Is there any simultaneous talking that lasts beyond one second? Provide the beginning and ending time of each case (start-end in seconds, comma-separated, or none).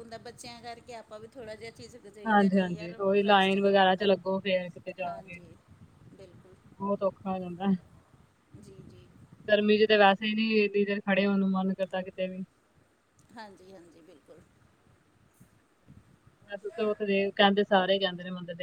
2.3-4.1